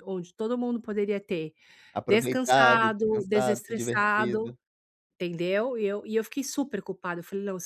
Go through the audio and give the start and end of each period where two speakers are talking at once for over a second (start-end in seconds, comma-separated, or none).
2.0-4.5